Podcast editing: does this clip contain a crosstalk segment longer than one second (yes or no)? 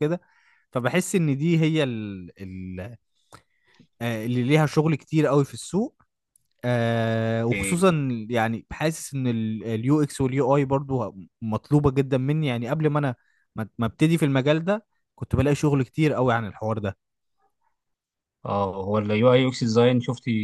no